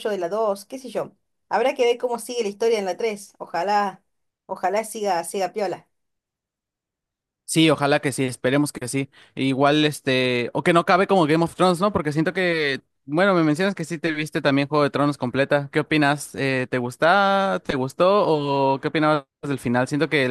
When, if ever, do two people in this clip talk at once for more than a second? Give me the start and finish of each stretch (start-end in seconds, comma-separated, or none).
none